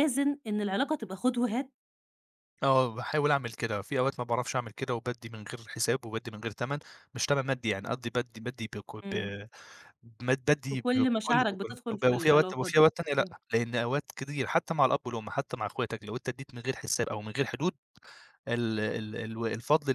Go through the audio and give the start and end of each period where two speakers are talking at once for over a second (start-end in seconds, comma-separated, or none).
10.7-13.3